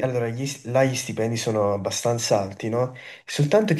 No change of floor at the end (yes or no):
yes